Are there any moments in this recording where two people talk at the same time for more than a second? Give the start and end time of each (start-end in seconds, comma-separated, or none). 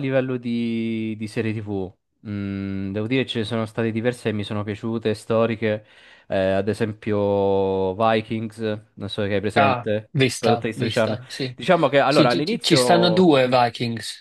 9.5-11.2, 12.1-13.5